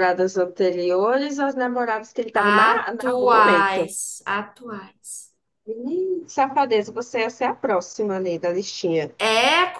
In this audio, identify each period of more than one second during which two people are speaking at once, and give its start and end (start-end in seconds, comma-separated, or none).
2.5-3.9